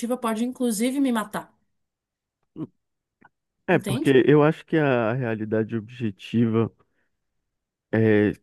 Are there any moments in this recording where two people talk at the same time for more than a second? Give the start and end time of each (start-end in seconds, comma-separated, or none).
none